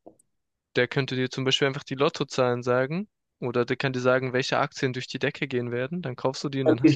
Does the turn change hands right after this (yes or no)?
yes